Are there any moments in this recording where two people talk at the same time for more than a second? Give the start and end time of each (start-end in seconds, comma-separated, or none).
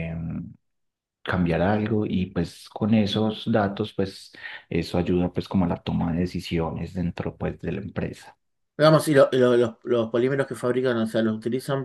none